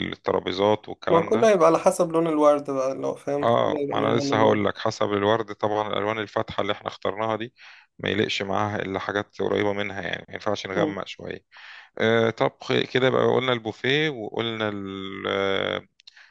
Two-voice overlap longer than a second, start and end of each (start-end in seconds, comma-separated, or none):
3.4-4.7